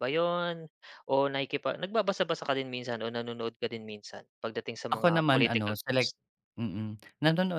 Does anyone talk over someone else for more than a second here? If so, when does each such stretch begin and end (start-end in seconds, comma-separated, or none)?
4.9-6.1